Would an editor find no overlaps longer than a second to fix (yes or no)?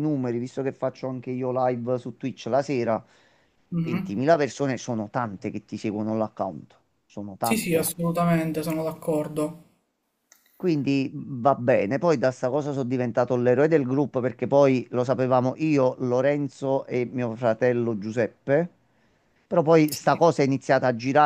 yes